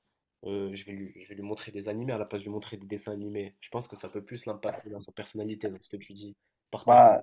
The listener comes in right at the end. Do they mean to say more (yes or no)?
no